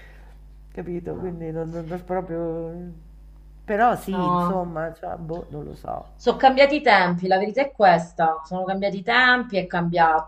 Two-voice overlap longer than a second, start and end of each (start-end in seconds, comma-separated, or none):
none